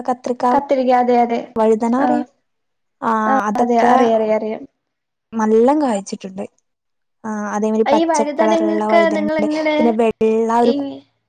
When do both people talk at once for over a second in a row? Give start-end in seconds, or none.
8.0-9.8